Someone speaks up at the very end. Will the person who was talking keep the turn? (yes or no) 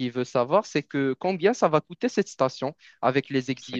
yes